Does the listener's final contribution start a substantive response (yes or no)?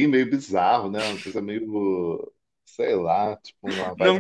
yes